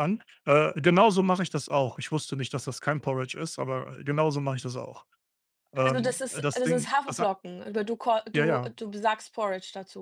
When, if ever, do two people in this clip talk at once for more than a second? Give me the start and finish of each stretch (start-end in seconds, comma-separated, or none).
5.8-7.3